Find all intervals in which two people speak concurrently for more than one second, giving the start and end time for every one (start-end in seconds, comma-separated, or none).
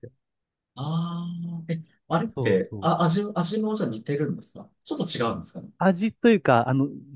none